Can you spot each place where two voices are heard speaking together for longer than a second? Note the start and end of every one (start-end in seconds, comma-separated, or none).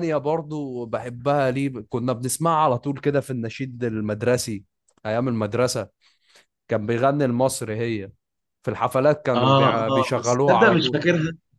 9.3-11.0